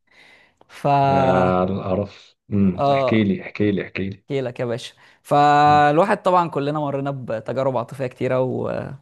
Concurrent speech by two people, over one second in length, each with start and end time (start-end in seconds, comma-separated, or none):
none